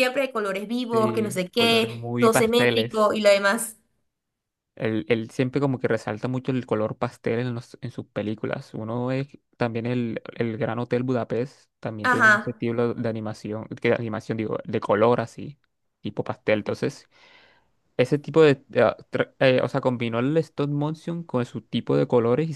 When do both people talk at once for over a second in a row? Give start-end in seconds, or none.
0.9-3.2